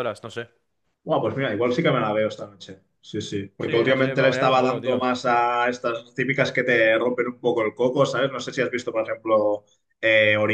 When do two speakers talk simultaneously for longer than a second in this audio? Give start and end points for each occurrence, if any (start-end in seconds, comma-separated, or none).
3.6-5.1